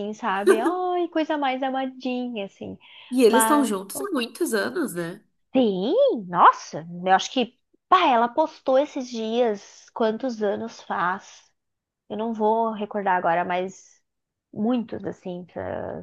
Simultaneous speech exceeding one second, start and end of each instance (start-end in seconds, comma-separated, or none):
none